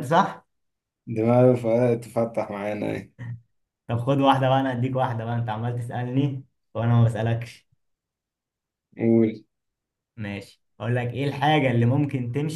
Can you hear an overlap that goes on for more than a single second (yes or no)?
no